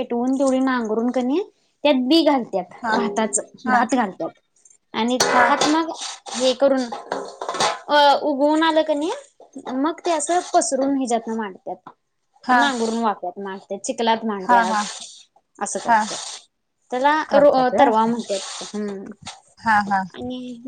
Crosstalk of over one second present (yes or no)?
no